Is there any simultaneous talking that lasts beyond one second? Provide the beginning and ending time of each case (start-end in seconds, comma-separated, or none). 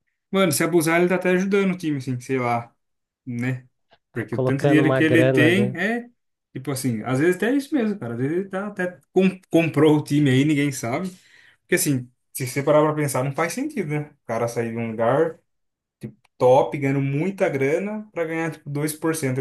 4.1-5.7